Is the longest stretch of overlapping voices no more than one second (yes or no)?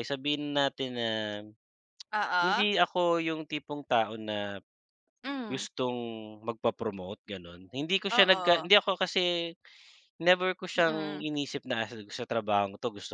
yes